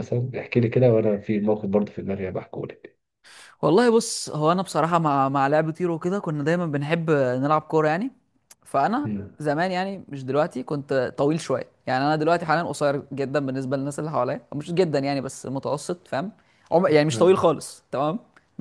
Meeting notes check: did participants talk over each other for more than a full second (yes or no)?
no